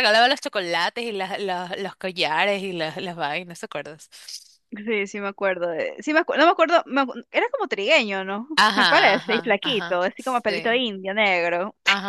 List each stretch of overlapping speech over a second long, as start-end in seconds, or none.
8.6-10.8